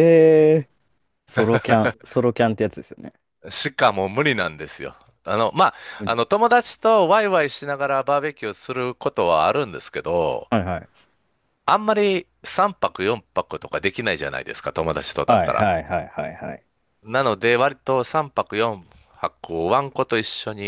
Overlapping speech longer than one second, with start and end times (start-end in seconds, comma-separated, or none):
none